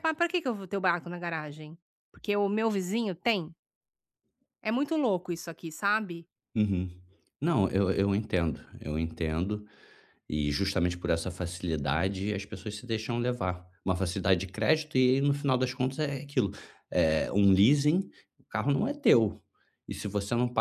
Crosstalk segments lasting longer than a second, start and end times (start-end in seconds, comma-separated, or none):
none